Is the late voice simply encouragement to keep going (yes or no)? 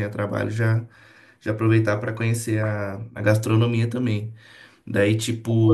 yes